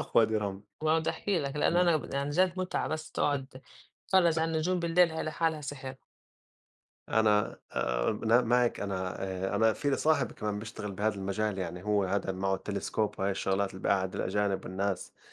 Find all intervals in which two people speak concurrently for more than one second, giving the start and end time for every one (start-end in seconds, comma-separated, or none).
none